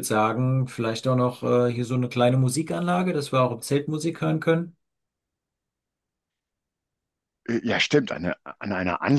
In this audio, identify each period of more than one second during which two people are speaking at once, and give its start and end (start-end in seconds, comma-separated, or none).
none